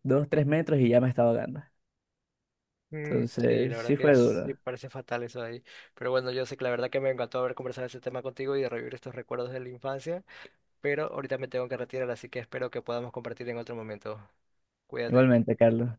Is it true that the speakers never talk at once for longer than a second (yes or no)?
no